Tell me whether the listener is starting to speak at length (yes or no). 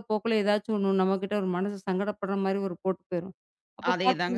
no